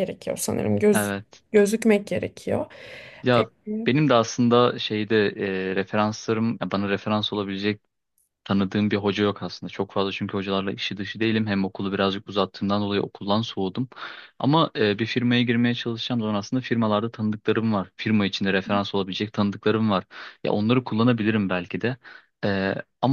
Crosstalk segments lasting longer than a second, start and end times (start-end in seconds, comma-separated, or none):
none